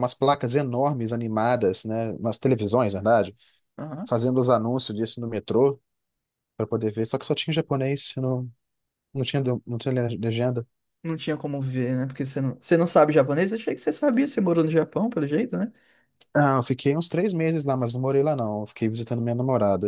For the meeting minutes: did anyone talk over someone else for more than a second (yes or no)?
no